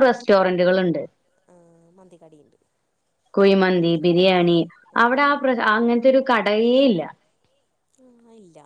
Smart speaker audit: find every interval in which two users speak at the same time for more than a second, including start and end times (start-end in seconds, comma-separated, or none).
none